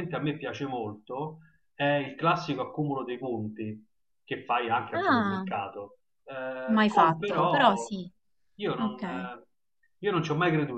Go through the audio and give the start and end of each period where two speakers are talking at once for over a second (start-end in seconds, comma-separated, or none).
6.7-7.9